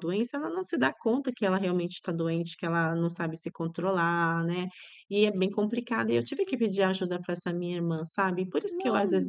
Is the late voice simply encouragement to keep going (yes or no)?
yes